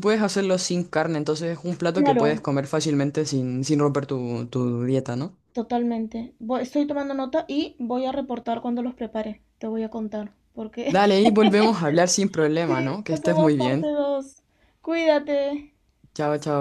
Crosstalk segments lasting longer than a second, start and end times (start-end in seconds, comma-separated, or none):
12.7-13.9